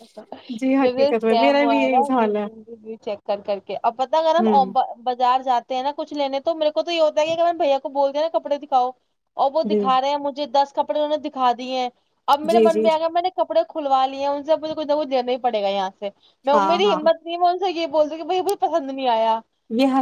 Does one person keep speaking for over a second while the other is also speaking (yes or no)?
yes